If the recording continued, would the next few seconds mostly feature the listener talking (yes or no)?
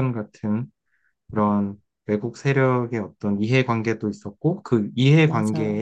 no